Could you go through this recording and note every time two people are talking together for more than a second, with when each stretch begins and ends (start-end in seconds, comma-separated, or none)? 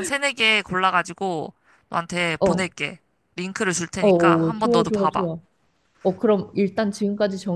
4.0-5.3